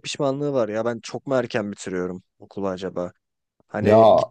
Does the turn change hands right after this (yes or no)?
no